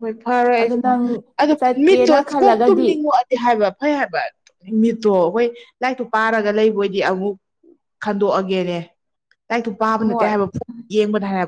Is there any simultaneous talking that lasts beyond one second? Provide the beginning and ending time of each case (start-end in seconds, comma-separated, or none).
0.6-3.0